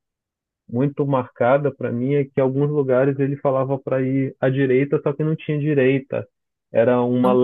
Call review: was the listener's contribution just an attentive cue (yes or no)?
yes